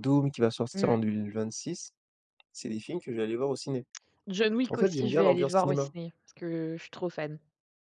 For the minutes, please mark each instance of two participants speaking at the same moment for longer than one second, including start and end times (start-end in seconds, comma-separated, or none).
4.7-5.9